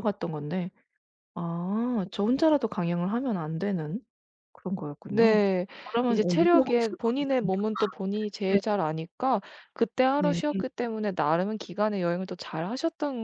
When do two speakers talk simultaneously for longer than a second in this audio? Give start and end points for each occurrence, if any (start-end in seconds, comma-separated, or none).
6.1-7.5